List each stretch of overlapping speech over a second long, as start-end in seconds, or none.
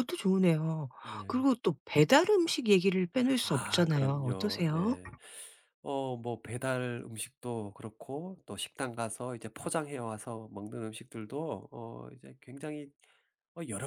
3.4-5.0